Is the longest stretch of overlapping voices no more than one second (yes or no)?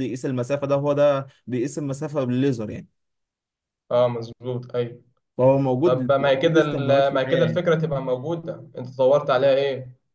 no